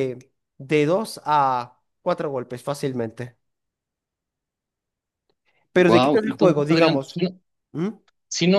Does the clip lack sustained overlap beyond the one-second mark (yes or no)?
no